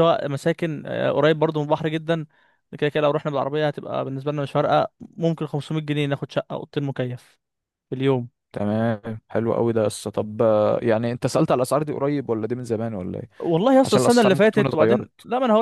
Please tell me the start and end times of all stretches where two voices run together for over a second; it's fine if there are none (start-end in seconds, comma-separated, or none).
13.8-15.1